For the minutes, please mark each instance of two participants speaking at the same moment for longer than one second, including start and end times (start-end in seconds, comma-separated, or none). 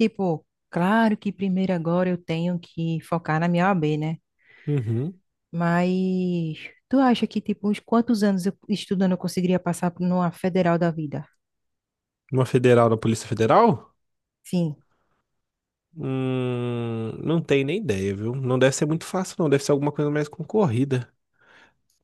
none